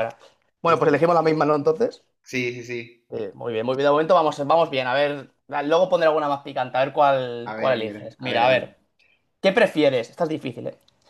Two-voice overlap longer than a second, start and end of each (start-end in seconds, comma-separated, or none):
7.5-8.8